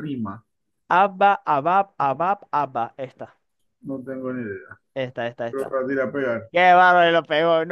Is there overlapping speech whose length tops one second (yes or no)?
no